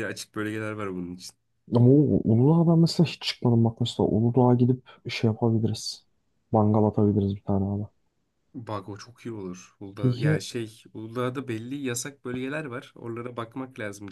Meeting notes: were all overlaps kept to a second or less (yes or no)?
yes